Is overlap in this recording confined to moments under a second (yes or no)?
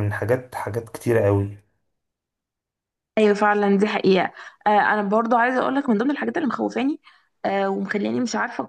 yes